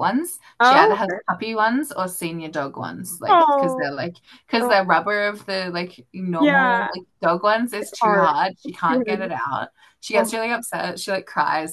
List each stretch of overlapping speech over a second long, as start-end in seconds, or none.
7.8-9.3